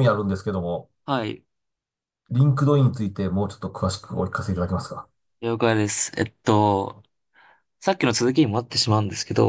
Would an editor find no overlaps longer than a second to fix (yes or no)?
yes